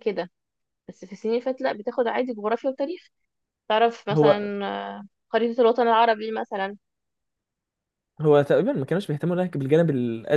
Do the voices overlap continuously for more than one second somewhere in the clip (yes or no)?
no